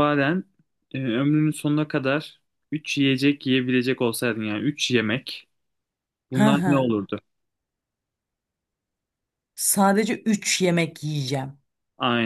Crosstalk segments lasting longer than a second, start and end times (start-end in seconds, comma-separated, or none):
none